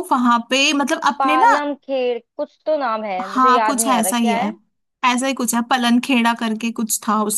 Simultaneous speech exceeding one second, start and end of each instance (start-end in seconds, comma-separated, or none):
3.2-4.5